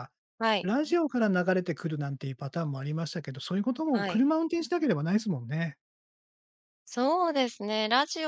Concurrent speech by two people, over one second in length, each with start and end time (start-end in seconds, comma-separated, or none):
none